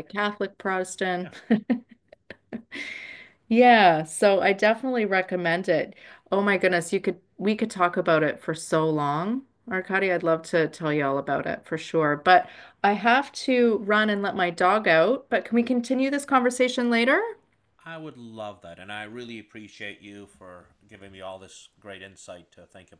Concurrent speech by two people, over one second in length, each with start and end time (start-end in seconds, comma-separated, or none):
none